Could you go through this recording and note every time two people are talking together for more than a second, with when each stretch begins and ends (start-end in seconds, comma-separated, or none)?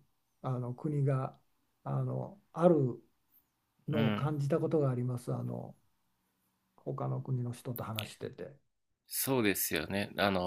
none